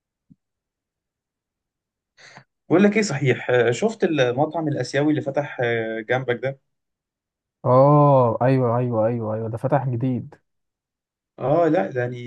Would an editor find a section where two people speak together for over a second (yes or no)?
no